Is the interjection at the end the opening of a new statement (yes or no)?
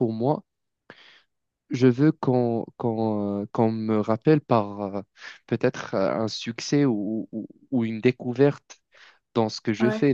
no